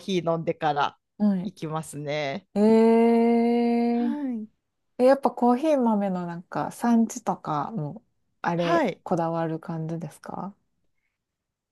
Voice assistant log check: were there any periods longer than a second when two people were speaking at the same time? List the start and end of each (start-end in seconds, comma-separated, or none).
none